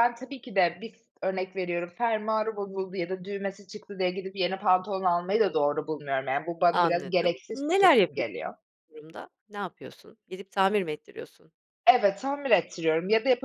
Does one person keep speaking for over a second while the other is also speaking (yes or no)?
yes